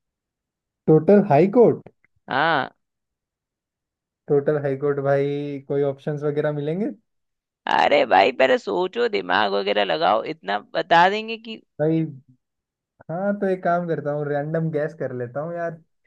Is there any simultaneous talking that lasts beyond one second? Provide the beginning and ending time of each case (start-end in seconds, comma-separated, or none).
none